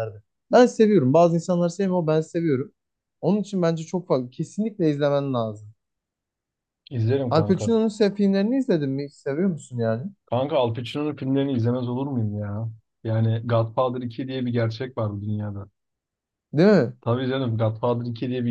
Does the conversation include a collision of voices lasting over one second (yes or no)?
no